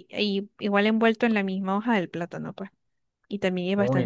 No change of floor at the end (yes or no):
no